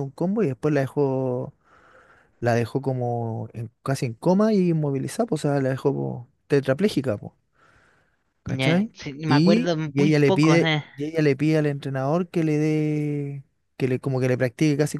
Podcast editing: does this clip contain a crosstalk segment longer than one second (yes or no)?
yes